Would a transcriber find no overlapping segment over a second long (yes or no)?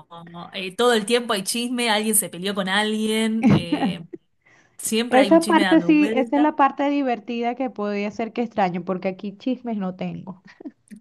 no